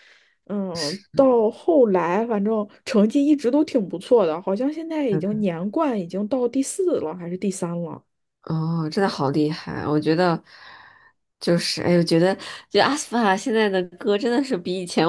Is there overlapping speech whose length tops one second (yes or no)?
no